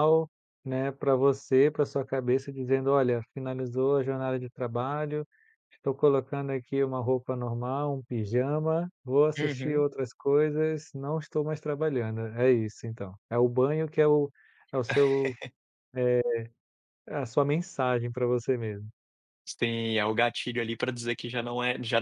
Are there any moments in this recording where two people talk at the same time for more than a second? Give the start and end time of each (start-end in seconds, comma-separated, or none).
none